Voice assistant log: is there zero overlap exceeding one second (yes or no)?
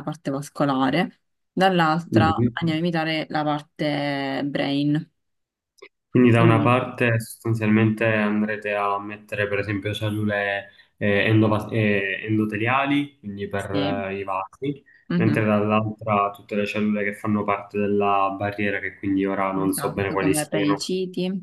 no